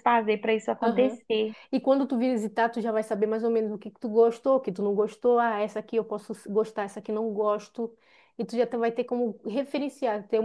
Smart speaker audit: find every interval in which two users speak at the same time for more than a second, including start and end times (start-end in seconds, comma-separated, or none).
none